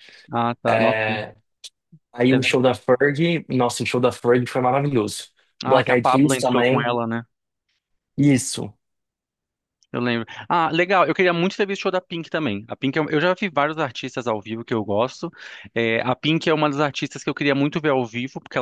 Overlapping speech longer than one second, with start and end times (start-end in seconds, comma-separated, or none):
5.7-6.9